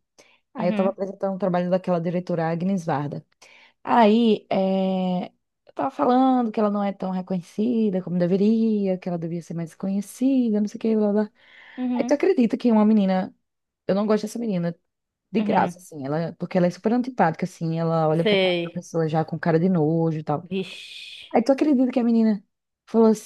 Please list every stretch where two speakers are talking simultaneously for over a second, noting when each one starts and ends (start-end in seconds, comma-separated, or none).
none